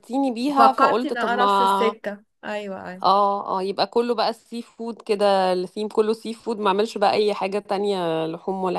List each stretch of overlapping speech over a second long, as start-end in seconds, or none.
0.5-2.0